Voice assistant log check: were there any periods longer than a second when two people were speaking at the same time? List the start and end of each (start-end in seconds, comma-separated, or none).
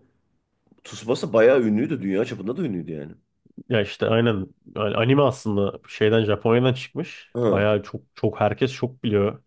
none